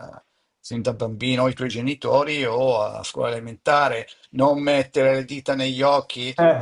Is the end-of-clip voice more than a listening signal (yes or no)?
no